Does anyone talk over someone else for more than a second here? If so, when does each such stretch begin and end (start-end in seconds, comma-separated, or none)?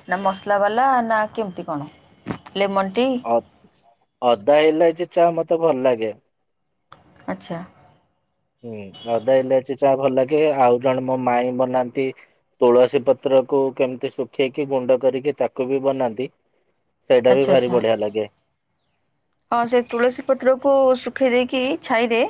none